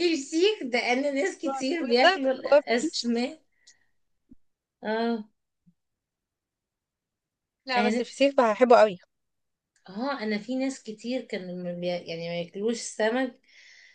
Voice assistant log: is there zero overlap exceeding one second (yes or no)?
no